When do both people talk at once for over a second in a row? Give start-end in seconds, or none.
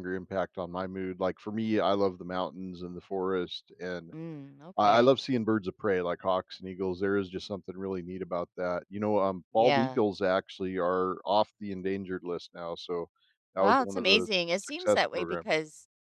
13.6-15.6